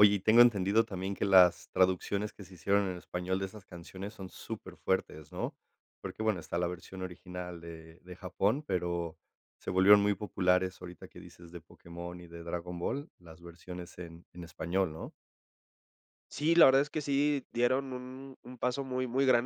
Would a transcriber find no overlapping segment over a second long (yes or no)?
yes